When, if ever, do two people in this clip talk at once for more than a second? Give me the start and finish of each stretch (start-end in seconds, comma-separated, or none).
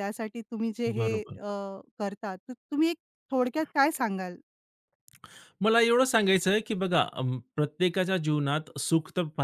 none